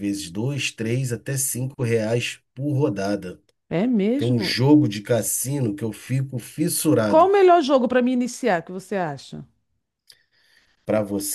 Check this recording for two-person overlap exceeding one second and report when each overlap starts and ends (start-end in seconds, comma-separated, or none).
none